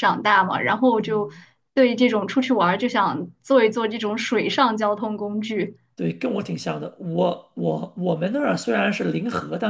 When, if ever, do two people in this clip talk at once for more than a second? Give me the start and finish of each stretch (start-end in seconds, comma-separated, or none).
none